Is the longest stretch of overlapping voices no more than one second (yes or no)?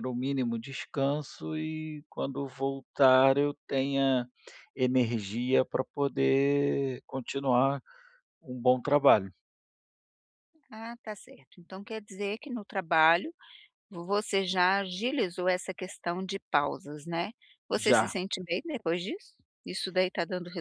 yes